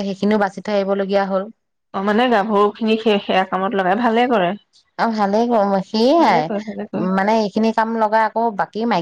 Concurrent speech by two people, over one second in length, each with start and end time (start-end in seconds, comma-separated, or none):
none